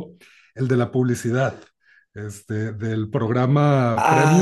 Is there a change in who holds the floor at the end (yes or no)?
yes